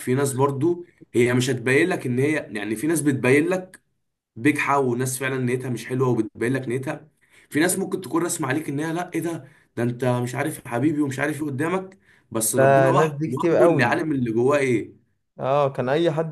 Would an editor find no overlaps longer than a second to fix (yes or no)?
no